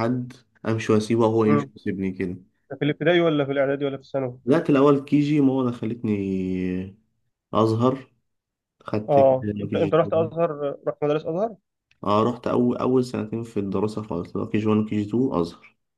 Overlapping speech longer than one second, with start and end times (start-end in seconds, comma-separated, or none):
9.1-10.4